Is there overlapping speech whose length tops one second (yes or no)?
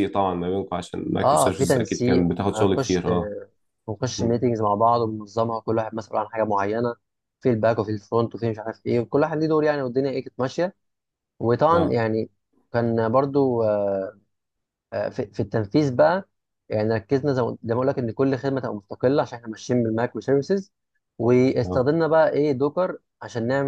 yes